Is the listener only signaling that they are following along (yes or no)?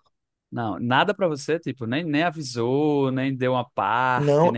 no